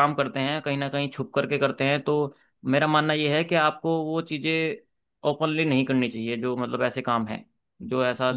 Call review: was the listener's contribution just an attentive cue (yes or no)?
no